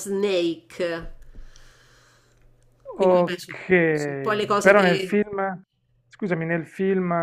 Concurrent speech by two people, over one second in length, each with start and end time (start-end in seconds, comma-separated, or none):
3.0-5.2